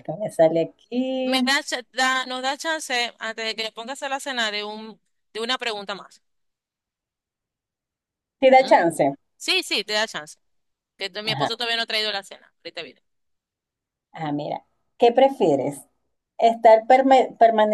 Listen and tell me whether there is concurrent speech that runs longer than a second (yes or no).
no